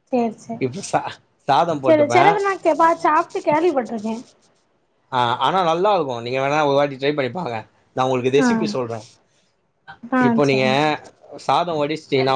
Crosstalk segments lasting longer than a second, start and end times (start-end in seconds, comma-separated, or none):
none